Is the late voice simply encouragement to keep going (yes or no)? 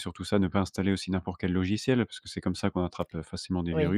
no